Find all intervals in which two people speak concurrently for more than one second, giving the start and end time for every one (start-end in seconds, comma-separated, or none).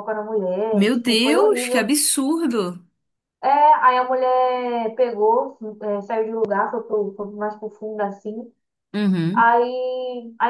0.7-1.9